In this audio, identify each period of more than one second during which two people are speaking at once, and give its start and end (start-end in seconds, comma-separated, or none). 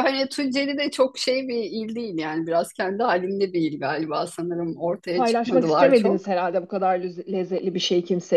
5.1-6.3